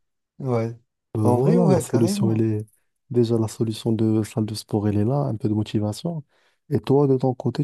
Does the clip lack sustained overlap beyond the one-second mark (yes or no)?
no